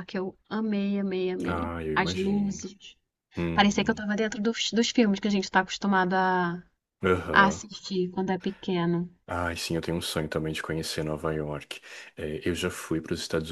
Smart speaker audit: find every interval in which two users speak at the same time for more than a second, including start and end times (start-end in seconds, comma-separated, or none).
1.5-2.7